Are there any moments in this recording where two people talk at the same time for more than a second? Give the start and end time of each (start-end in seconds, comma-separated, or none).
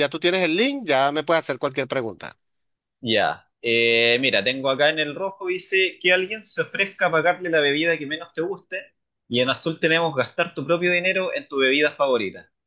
none